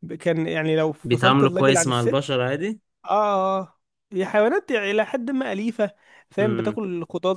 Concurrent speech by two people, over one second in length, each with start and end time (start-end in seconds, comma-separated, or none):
1.0-2.4